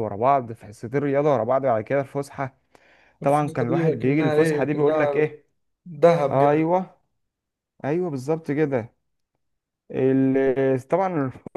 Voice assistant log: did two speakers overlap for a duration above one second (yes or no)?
yes